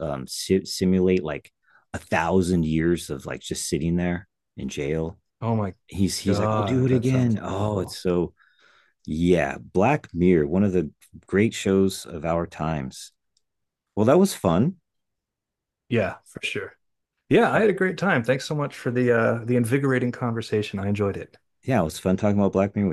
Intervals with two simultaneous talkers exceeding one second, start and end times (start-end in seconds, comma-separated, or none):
6.2-8.0